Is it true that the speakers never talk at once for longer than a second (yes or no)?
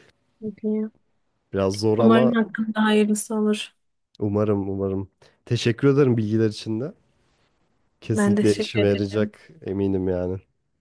no